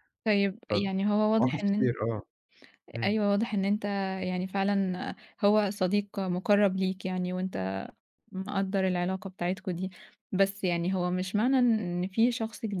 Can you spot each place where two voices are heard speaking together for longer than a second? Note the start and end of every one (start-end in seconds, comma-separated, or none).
0.7-1.9